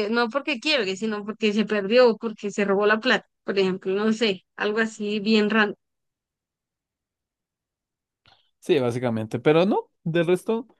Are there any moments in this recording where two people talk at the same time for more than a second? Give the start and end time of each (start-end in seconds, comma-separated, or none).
none